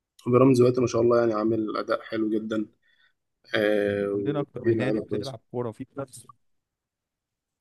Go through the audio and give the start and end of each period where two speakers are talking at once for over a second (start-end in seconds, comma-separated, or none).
4.1-5.3